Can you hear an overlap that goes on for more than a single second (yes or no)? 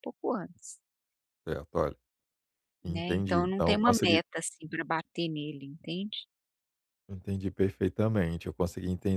yes